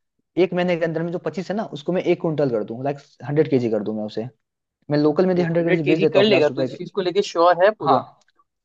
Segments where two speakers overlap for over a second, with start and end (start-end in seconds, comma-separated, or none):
5.3-6.8